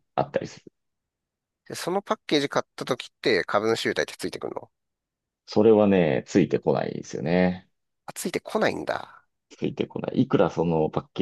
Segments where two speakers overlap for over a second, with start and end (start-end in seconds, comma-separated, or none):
none